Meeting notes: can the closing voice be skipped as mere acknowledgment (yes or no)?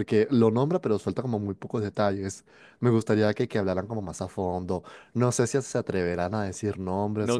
no